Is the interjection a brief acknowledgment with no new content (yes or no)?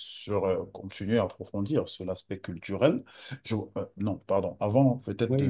no